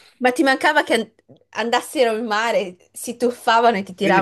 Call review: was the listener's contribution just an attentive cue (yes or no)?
no